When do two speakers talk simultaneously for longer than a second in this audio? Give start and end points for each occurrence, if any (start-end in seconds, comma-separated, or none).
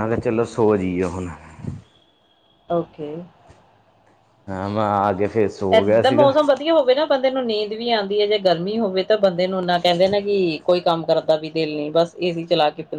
none